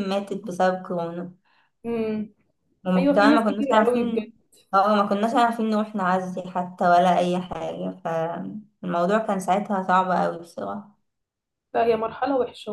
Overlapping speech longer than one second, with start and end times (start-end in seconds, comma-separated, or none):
3.0-4.3